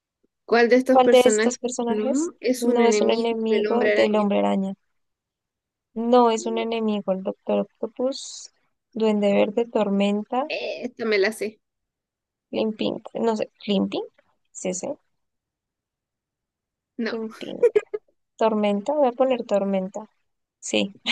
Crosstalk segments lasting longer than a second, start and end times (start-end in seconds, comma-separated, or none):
0.9-4.3